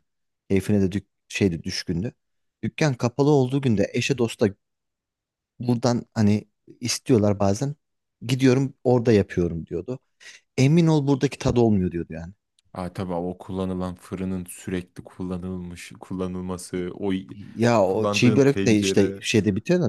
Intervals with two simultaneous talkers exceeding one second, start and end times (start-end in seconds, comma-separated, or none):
17.8-19.2